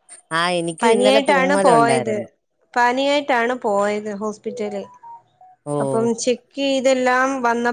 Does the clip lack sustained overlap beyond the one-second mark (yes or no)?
no